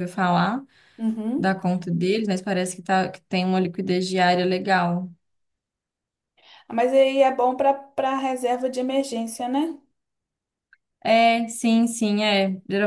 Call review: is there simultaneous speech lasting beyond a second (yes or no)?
no